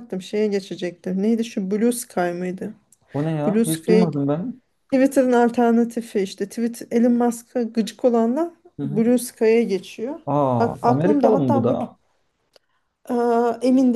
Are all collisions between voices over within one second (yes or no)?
no